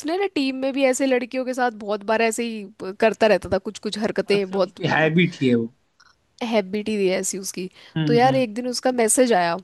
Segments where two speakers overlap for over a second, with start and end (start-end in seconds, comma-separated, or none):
none